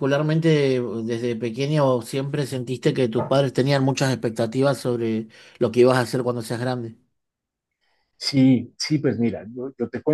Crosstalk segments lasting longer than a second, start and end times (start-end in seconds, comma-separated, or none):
none